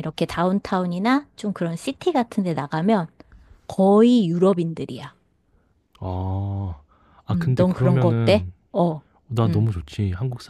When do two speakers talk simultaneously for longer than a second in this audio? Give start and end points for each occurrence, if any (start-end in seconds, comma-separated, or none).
7.3-8.5